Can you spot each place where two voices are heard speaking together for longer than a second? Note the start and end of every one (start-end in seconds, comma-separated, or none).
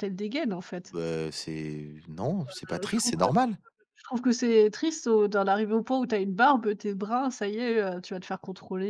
none